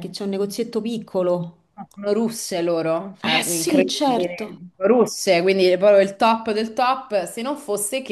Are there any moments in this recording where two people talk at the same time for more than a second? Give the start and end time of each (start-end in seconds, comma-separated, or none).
3.2-4.6